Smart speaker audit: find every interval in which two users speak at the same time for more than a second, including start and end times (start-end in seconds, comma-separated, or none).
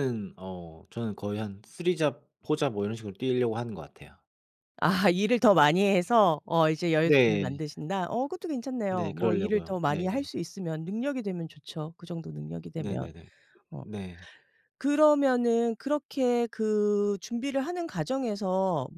8.9-10.3